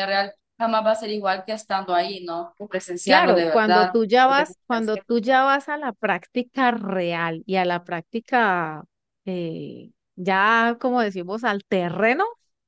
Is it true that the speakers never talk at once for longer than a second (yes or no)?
no